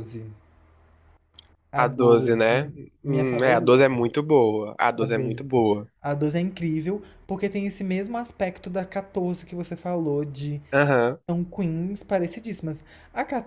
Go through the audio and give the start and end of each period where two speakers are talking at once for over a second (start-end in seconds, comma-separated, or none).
1.8-3.9